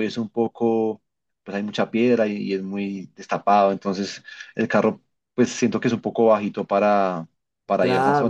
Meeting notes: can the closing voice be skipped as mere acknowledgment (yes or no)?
no